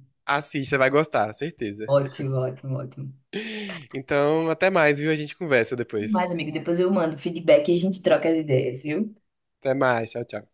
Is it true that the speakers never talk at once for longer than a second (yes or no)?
yes